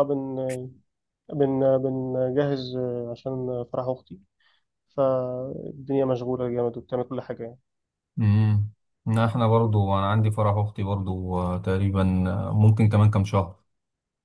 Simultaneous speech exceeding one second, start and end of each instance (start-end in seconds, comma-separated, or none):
none